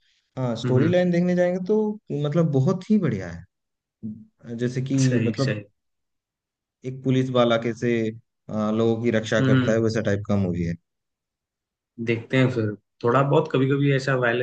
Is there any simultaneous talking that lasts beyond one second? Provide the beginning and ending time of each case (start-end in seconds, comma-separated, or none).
none